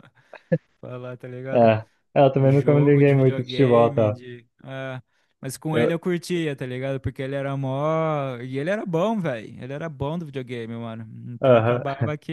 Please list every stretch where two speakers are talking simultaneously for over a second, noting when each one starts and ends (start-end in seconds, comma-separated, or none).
2.4-4.2